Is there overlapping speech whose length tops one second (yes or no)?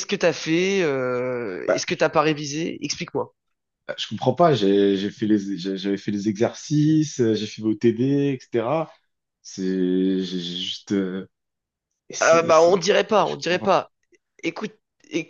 yes